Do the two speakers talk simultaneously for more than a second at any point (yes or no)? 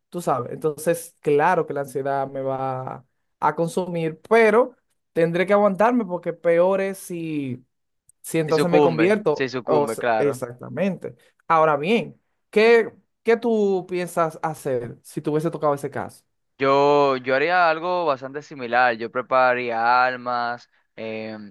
yes